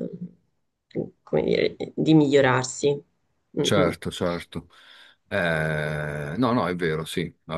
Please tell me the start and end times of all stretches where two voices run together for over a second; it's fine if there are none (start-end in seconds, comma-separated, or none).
none